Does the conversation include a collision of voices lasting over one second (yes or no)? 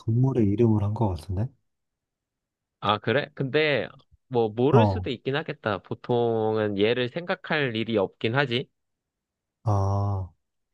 no